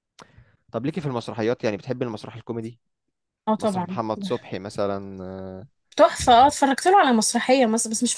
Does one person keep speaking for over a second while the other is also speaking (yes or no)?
no